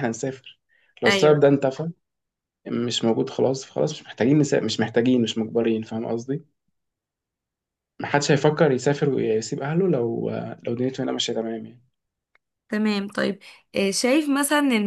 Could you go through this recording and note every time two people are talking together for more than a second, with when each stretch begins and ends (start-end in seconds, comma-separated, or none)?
none